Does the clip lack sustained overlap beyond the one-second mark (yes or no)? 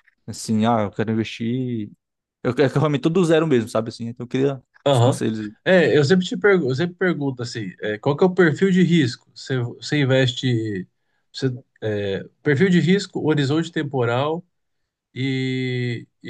yes